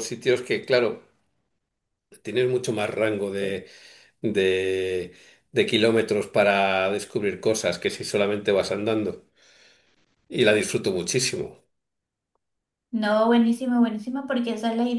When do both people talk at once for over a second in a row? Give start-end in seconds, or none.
none